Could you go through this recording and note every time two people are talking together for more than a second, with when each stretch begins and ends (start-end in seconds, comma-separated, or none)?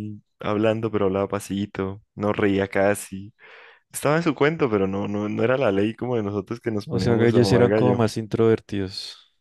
6.9-8.1